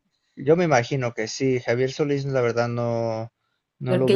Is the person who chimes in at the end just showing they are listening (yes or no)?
no